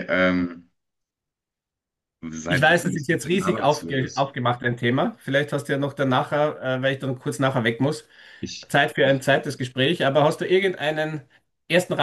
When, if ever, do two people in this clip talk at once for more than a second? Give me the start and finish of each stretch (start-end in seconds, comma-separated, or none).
2.5-4.3